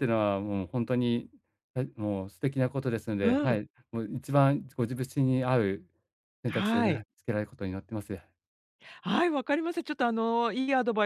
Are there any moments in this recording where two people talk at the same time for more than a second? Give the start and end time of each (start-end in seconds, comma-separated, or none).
none